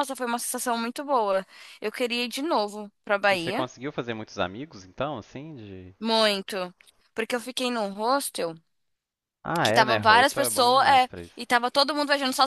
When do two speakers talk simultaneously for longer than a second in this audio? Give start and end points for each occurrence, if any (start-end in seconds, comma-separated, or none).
9.6-11.4